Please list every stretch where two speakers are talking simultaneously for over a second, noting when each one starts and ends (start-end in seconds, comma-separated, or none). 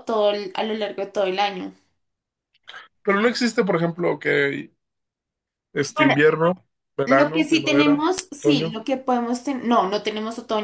7.0-8.8